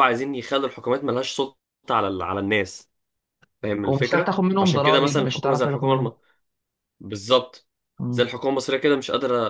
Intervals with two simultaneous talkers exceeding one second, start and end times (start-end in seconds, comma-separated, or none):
3.8-6.1